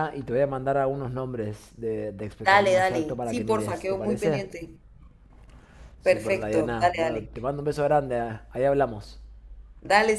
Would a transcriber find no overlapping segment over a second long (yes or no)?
no